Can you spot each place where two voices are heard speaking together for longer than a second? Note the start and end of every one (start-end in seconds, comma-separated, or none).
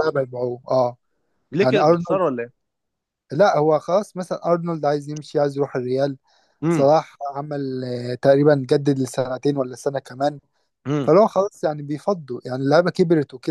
none